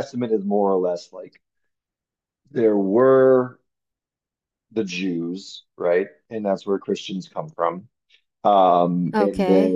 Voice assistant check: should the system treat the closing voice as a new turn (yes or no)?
no